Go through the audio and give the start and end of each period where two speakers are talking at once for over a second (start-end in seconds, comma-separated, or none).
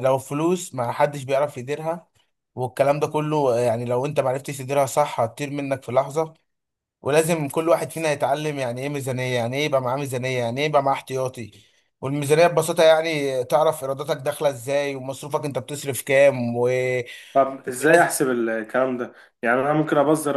none